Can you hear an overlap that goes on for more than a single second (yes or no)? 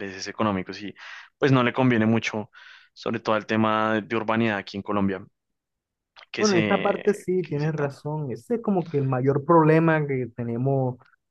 yes